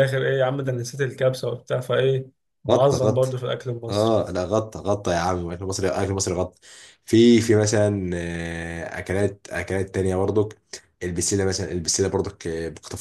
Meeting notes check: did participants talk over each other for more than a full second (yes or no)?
no